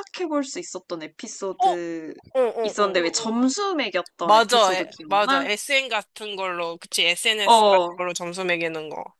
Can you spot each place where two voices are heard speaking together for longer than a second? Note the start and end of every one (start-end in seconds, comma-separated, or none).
4.2-5.5